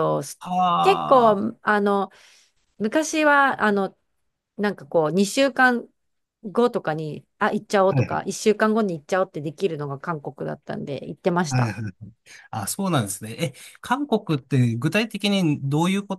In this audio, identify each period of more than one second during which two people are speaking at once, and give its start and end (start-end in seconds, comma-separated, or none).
none